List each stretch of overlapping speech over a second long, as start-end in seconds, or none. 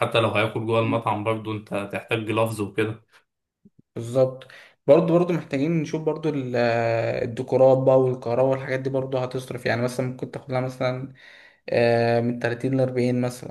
none